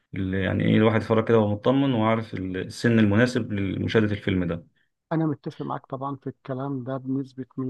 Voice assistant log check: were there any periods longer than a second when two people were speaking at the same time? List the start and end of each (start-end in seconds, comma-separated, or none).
none